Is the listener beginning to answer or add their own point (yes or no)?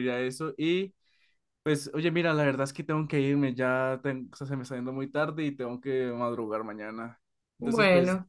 no